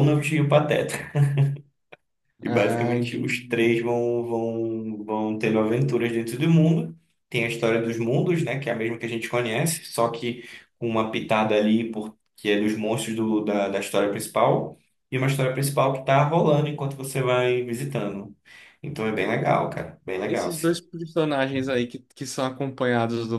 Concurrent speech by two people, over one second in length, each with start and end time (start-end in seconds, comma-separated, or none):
2.4-3.8